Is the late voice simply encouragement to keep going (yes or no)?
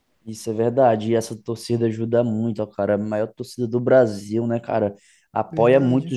yes